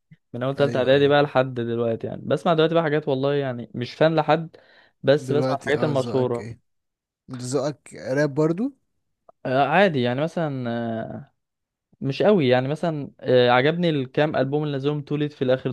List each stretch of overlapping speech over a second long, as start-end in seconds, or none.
5.2-6.5